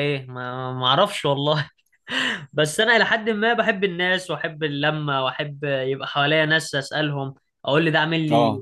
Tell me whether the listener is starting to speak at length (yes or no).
no